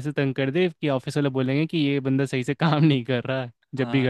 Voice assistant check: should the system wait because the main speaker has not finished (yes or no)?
no